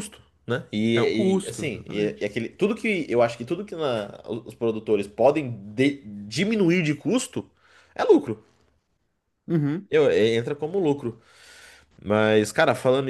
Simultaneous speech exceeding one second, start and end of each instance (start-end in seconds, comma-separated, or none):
0.9-2.3